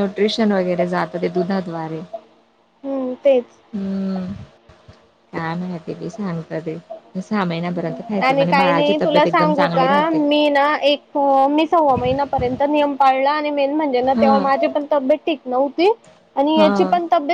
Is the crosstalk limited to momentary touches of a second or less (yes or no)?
no